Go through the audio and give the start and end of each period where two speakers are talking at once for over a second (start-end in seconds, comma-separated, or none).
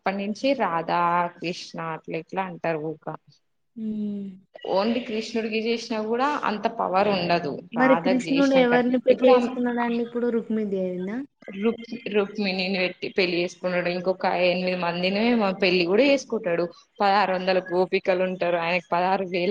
7.8-9.5